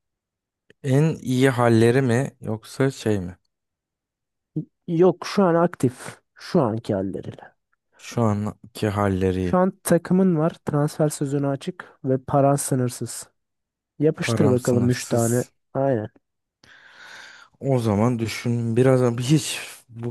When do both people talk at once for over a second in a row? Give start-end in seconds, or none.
14.2-15.5